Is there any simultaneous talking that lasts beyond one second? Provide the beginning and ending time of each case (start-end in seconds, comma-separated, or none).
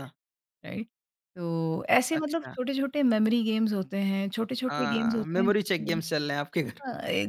4.7-6.0